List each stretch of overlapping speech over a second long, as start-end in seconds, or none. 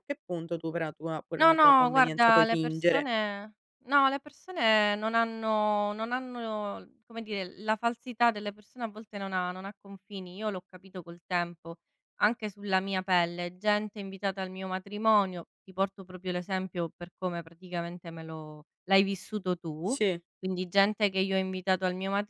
1.4-3.1